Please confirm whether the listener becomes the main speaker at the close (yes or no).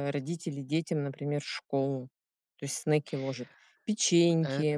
no